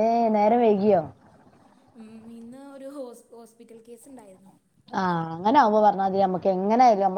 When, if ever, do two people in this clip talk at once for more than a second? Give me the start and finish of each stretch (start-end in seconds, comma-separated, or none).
none